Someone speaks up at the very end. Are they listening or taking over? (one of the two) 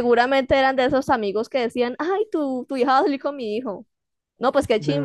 taking over